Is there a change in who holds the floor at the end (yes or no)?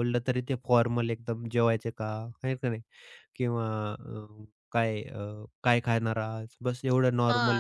yes